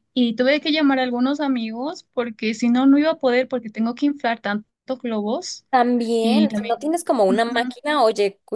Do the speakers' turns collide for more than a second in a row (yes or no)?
yes